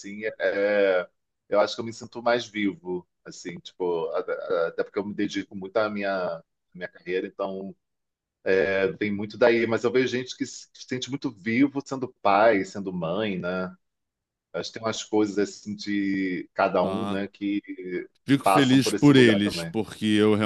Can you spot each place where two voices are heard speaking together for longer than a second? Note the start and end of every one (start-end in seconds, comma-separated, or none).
18.4-19.8